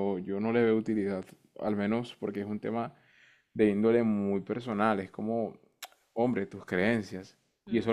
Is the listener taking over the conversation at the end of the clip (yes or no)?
no